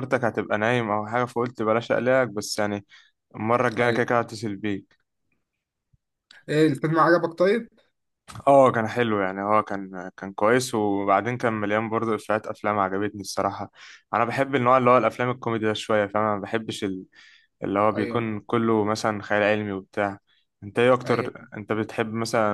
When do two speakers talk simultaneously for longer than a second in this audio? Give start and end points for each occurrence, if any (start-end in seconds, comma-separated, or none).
none